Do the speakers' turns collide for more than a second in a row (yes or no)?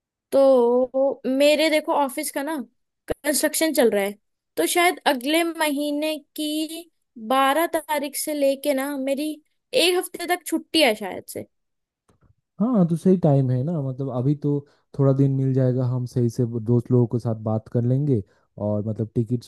no